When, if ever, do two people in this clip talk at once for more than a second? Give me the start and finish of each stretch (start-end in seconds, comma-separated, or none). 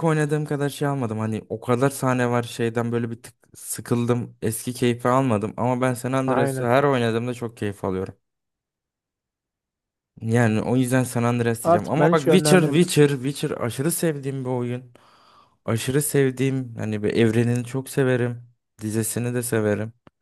11.6-12.9